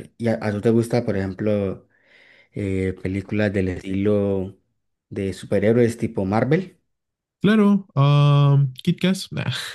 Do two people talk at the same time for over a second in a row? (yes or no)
no